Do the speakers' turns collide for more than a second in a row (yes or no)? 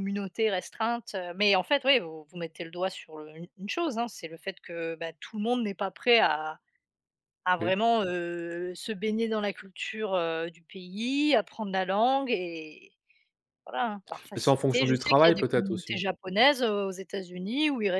yes